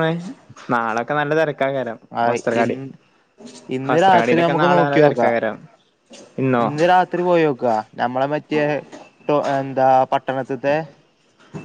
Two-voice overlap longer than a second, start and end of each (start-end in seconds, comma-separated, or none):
3.9-5.3